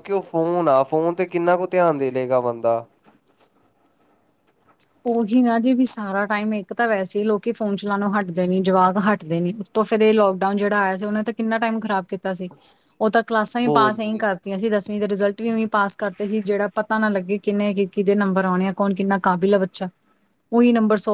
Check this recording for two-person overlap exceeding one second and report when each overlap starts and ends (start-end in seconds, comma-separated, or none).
none